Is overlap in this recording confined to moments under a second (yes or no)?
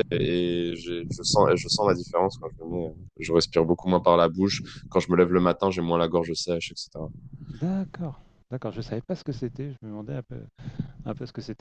yes